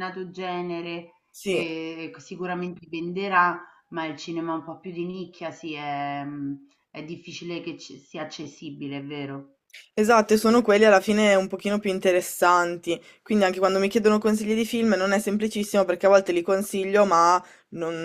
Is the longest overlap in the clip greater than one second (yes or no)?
no